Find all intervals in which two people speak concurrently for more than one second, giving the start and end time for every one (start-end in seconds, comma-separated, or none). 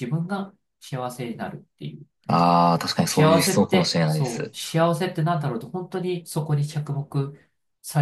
3.0-4.5